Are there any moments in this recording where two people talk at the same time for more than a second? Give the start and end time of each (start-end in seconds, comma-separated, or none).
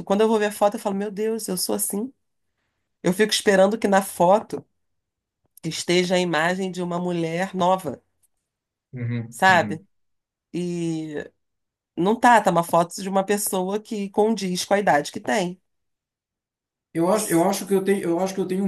none